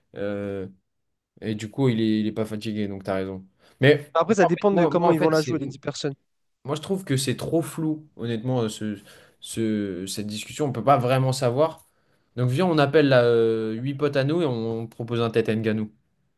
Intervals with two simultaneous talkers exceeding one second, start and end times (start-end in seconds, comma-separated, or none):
4.1-5.6